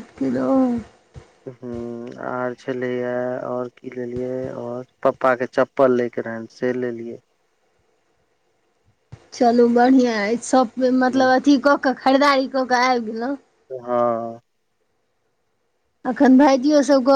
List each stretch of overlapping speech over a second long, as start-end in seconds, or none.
none